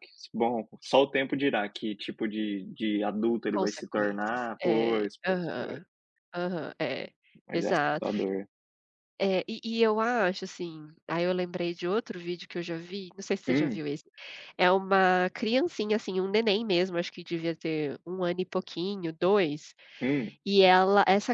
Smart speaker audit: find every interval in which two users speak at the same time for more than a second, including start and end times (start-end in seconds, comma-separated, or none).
3.5-5.8